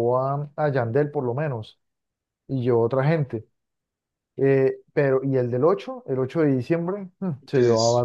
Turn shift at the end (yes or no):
no